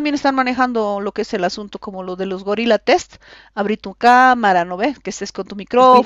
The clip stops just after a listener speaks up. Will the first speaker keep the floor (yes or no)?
no